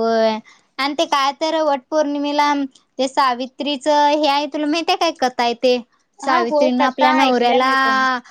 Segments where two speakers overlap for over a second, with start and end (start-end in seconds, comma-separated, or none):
6.2-7.7